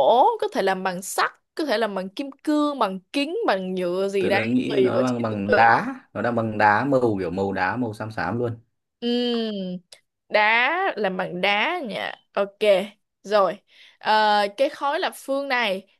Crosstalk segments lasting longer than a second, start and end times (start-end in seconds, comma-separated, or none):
4.2-5.7